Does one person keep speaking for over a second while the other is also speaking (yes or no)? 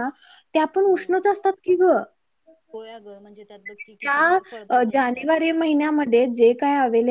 yes